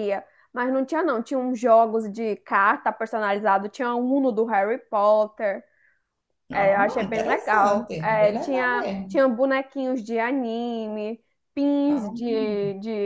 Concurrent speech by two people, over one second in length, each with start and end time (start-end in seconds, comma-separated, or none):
6.5-9.2